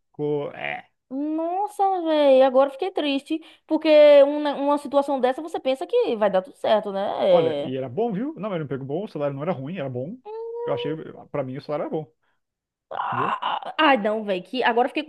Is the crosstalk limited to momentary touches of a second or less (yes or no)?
yes